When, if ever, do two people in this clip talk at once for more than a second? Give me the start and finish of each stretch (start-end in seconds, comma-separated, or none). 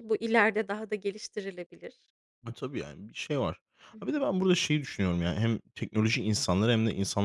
none